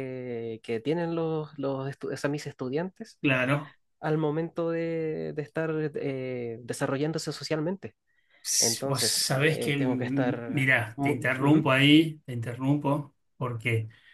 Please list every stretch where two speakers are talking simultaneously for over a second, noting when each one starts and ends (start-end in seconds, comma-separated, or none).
8.6-11.7